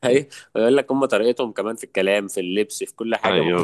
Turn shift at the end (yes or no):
yes